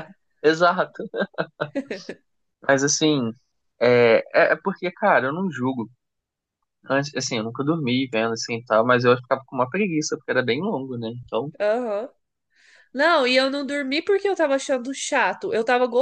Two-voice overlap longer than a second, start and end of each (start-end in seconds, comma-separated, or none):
none